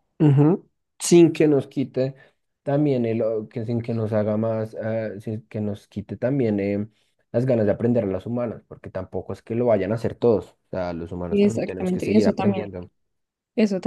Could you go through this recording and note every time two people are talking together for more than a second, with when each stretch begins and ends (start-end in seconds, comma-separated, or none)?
11.3-12.7